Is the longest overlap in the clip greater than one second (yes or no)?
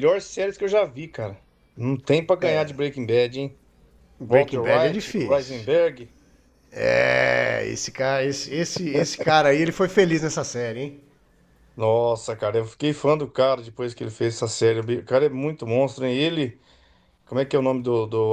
yes